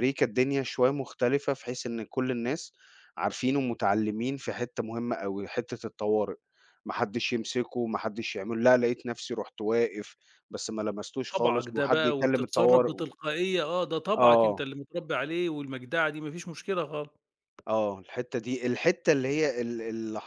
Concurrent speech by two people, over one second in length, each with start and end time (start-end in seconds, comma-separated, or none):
11.3-13.1